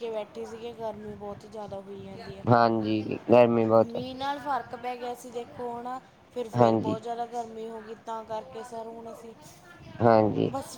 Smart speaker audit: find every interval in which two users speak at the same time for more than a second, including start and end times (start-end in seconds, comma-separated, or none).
none